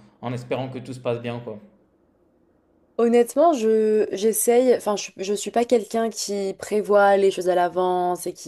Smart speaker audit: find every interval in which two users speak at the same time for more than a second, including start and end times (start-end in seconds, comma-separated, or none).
none